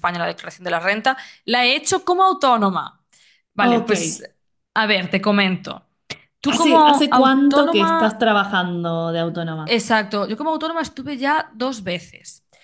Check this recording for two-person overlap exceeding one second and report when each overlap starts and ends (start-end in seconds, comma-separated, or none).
6.5-8.2